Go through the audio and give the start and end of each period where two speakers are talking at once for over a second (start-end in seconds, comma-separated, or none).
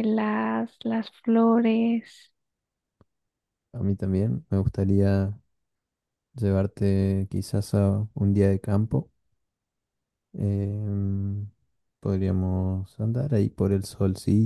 none